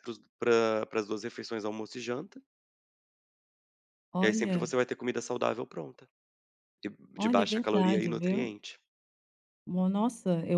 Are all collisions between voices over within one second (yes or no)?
no